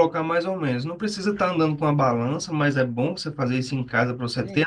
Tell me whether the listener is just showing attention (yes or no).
yes